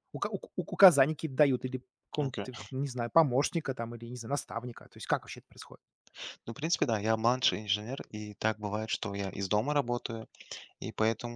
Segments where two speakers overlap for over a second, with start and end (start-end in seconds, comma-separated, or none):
none